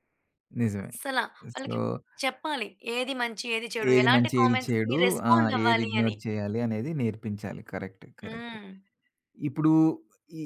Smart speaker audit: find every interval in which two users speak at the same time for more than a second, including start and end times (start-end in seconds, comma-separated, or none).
3.9-6.2